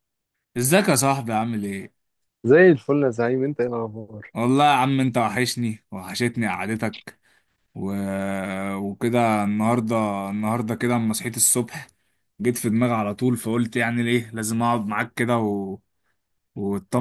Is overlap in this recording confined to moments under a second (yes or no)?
yes